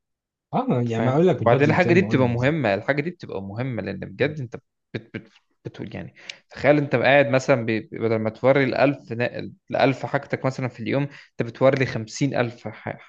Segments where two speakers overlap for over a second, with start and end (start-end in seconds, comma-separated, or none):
0.9-2.7